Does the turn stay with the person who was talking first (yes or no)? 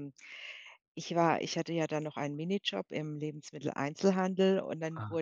yes